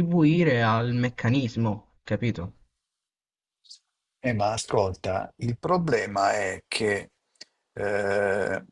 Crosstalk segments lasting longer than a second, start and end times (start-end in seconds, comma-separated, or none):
none